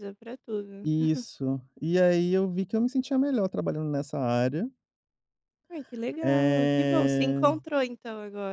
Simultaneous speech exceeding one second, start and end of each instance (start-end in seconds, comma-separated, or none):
6.2-7.5